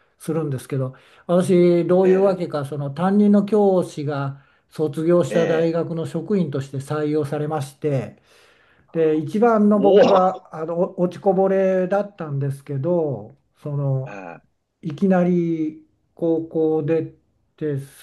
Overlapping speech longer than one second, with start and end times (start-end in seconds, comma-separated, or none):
none